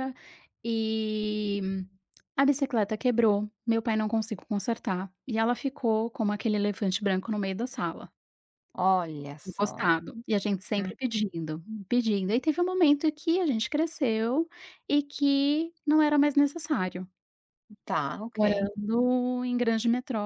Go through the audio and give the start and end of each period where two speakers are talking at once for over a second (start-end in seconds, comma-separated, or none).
none